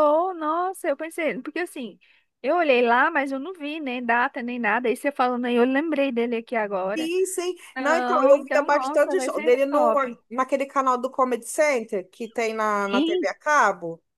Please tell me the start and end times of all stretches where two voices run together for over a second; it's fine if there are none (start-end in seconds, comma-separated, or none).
7.8-9.9